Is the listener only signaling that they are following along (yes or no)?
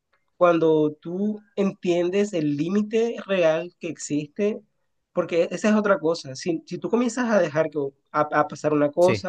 yes